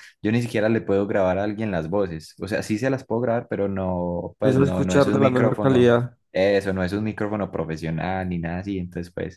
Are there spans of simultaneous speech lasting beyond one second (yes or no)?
yes